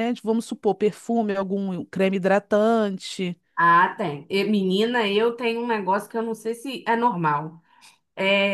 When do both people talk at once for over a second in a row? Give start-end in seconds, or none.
none